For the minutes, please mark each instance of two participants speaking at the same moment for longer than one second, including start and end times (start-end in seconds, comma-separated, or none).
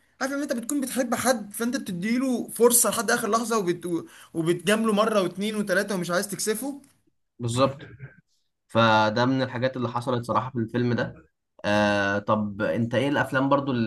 none